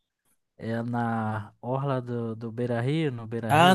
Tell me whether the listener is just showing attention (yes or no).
no